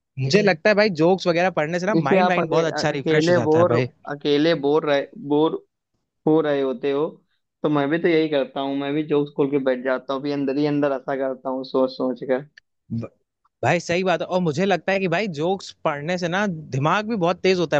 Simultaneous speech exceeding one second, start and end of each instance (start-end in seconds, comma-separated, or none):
2.0-3.8